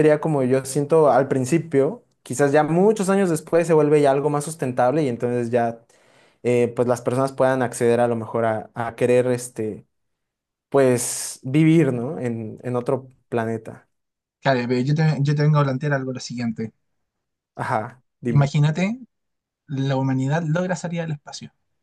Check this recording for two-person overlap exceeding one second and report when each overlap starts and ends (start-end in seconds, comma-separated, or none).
none